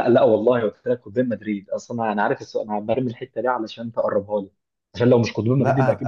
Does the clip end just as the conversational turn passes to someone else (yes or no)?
yes